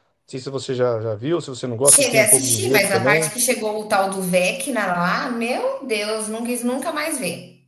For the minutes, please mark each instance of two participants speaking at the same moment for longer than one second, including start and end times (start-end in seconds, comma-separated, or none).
1.9-3.3